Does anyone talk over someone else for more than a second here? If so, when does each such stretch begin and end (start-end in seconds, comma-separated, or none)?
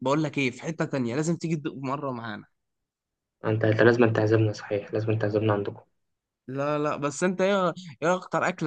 none